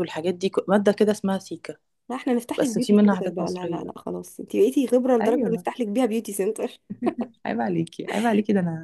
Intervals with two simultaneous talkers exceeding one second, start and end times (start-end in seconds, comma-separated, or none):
2.6-3.9